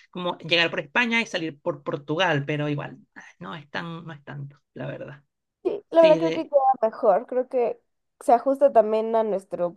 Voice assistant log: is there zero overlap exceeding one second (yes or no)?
yes